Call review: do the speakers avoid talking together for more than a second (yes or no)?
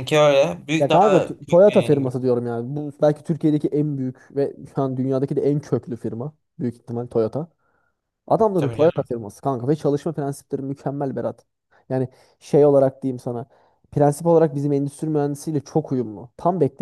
no